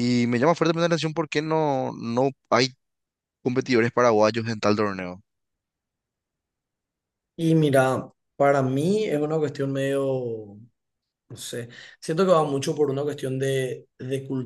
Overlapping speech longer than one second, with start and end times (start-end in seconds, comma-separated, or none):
none